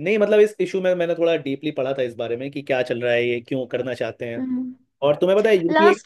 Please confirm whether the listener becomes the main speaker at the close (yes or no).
no